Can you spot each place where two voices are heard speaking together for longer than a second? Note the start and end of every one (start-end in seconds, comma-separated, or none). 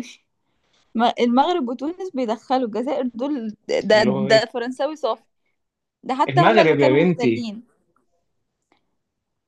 6.3-7.5